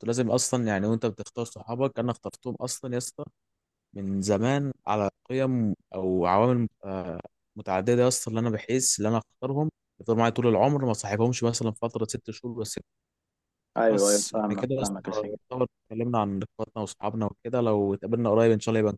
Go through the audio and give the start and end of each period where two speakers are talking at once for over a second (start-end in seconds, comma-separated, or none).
13.9-15.4